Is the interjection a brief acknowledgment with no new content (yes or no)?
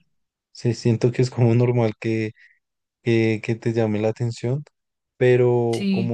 yes